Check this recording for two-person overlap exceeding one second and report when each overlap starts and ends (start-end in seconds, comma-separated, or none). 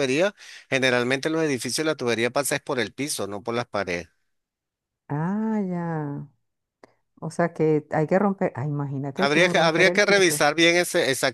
9.2-10.4